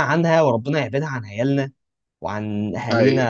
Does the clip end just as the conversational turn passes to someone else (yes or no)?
no